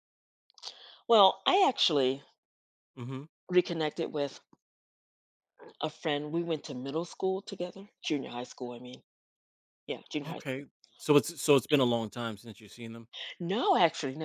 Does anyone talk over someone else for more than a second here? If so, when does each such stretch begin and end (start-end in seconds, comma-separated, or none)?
none